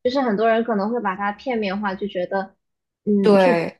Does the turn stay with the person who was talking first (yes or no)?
yes